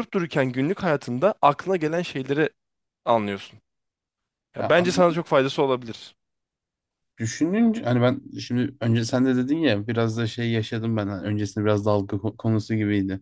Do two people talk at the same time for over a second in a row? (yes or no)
no